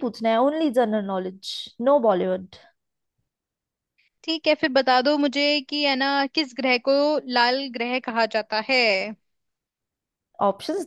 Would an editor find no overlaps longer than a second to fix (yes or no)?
yes